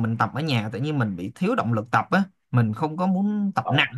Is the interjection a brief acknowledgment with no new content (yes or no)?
yes